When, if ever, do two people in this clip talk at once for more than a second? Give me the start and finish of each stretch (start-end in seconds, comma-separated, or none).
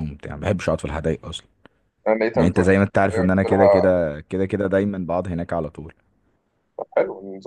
2.3-3.9